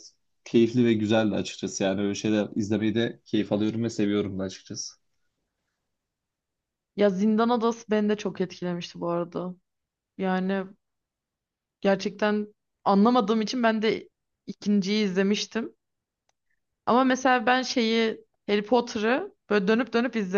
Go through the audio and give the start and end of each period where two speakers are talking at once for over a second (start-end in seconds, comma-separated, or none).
none